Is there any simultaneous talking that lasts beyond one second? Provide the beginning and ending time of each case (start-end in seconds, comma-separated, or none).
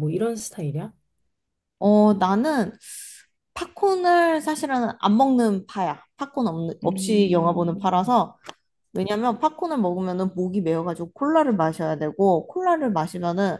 6.8-8.1